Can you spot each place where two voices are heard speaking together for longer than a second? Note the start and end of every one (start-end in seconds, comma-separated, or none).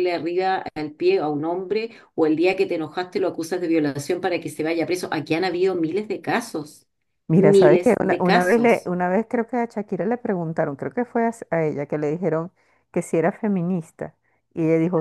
7.3-8.9